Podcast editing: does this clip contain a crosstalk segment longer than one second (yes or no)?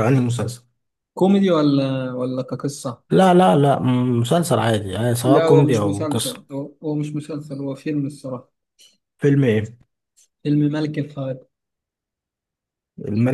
yes